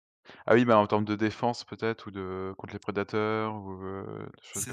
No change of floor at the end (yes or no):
no